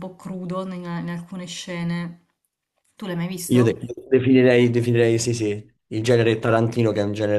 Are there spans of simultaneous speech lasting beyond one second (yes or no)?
no